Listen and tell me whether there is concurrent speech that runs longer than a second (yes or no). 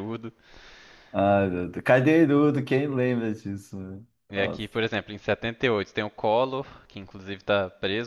no